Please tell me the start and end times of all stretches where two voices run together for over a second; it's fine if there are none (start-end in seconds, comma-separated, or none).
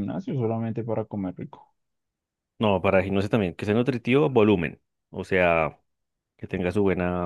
none